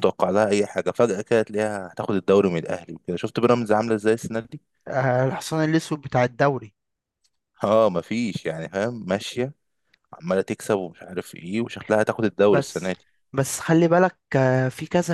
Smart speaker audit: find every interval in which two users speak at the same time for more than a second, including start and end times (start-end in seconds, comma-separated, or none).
none